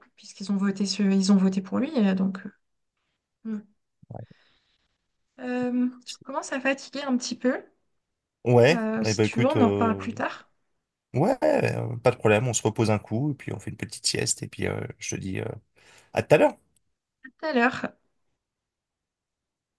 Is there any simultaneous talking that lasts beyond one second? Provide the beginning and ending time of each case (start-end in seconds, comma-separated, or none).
8.7-10.0